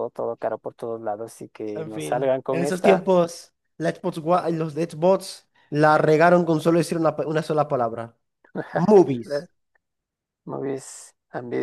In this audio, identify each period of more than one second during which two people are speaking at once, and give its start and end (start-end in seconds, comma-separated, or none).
1.7-3.1